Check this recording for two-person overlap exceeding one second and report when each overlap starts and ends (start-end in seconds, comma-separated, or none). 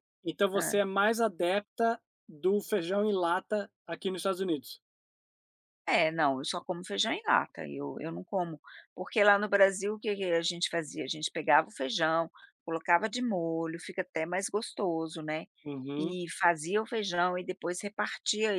none